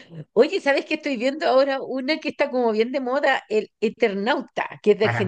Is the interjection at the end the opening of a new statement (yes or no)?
yes